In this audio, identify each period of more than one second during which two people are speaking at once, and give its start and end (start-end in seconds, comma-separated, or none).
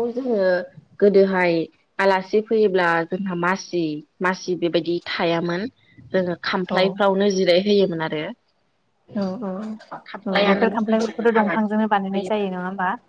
10.3-12.4